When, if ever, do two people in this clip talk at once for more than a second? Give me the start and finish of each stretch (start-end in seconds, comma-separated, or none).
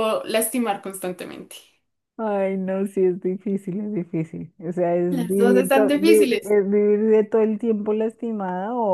5.1-6.5